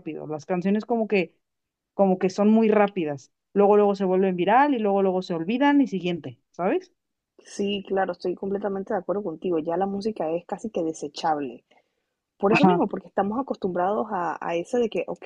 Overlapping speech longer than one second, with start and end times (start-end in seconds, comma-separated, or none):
none